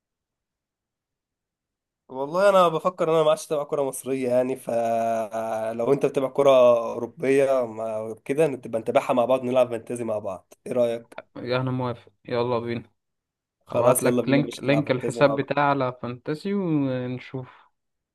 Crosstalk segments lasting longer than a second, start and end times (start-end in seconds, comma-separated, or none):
13.7-15.5